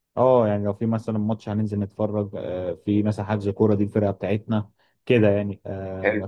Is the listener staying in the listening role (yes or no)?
yes